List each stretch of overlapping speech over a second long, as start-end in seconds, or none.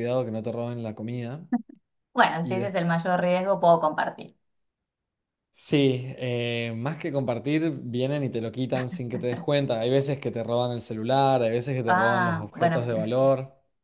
11.8-13.1